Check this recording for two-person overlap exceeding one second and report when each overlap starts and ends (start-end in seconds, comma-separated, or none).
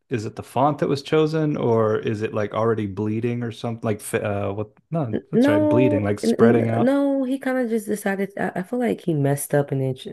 5.1-7.0